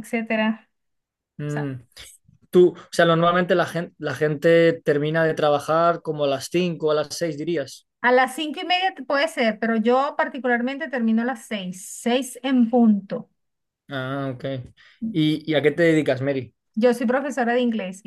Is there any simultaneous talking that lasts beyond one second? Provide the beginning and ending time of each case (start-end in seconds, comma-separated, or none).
none